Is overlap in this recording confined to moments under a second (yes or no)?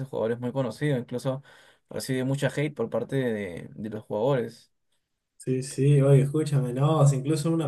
yes